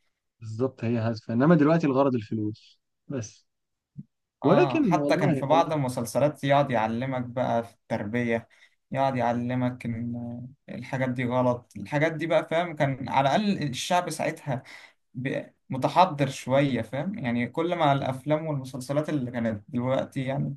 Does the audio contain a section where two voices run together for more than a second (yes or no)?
yes